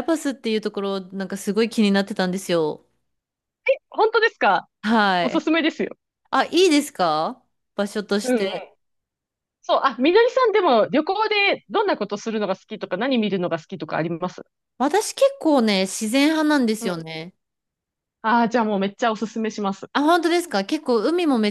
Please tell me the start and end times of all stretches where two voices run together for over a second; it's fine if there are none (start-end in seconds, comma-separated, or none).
none